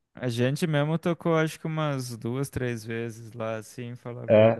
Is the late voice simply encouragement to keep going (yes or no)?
no